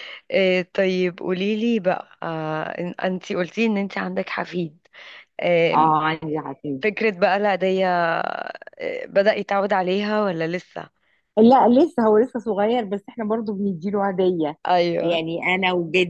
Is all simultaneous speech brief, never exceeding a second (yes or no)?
yes